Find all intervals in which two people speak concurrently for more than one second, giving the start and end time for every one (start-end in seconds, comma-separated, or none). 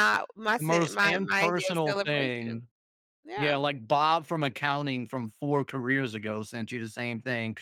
0.6-2.6